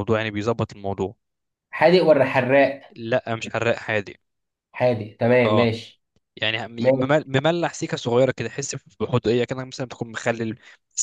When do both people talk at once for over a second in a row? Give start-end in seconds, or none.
none